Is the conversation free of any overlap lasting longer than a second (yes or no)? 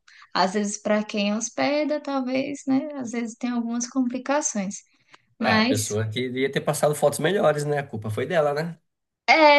yes